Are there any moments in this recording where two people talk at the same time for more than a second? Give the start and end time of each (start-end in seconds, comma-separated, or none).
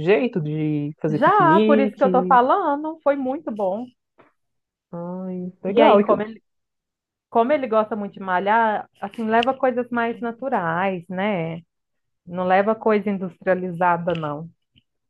1.1-2.4